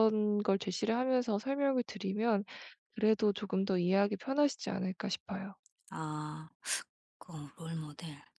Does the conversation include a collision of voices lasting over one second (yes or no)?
no